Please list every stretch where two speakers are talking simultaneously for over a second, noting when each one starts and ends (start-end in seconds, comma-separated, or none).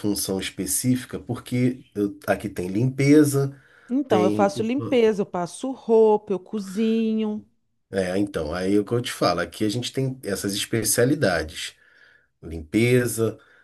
none